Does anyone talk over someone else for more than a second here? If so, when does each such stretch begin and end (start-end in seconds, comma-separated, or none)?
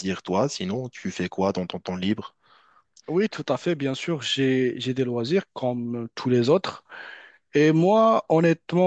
none